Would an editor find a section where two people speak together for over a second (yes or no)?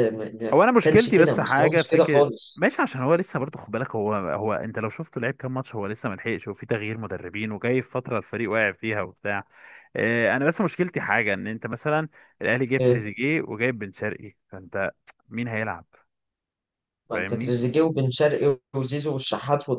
yes